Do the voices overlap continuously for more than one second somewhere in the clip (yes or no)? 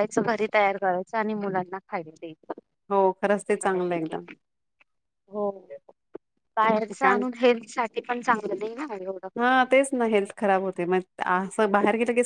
no